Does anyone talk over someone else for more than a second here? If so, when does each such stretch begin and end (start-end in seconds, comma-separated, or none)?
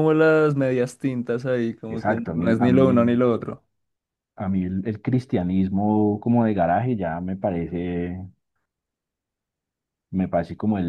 1.9-3.2